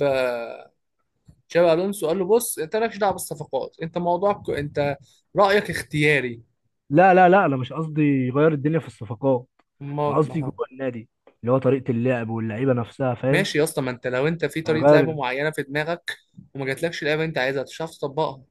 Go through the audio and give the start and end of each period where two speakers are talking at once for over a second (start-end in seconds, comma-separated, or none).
none